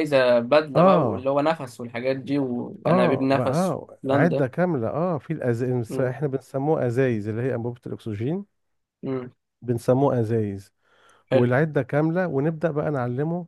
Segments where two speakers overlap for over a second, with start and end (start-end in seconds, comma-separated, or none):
2.9-4.5